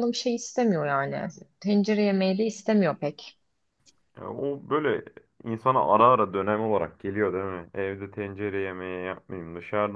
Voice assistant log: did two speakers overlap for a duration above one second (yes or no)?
no